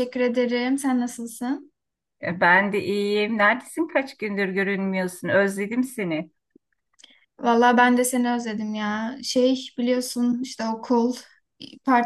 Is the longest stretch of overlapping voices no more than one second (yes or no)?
yes